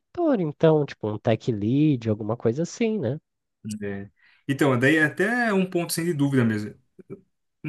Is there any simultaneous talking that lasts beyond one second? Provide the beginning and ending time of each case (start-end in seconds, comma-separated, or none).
none